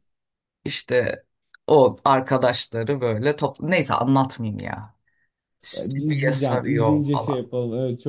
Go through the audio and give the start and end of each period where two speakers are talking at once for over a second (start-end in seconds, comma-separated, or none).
5.8-7.5